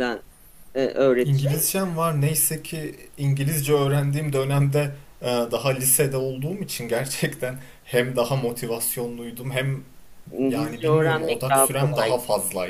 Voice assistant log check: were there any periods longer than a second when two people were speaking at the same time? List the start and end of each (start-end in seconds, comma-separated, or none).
10.5-12.2